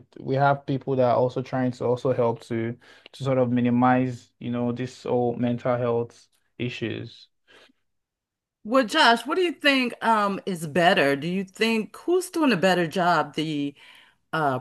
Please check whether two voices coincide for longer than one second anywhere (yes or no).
no